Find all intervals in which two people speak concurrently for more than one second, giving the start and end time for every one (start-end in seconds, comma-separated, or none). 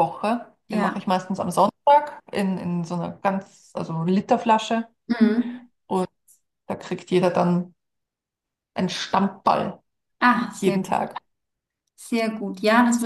none